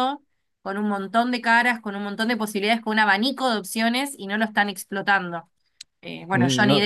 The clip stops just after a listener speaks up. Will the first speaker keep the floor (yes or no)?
yes